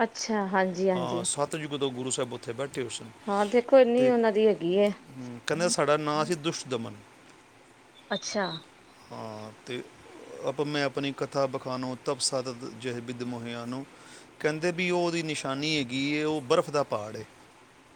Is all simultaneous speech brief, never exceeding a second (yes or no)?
yes